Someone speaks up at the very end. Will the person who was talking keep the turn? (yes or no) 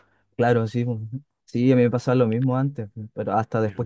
yes